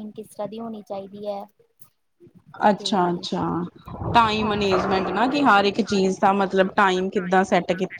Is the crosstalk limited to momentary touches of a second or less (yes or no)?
yes